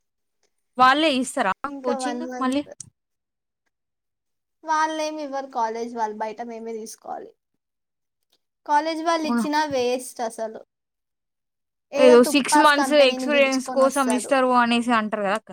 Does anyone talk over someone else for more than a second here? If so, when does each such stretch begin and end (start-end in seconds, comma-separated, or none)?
12.3-14.3